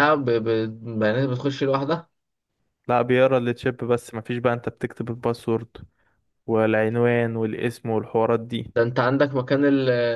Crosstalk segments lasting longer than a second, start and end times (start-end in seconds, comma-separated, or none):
none